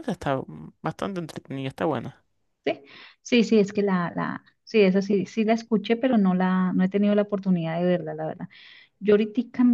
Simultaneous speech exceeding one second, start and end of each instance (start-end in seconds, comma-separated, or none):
none